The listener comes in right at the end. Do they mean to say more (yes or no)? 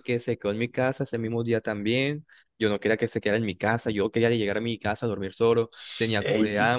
yes